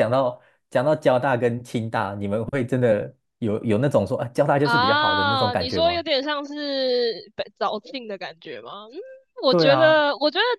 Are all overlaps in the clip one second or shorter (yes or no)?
no